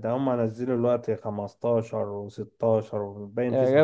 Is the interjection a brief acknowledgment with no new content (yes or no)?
no